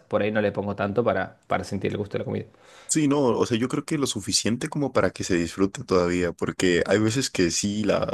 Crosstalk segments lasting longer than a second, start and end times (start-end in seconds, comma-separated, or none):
none